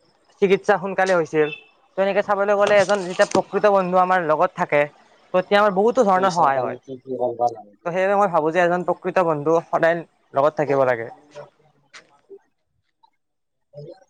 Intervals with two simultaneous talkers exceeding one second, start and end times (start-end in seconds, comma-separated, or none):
6.1-7.9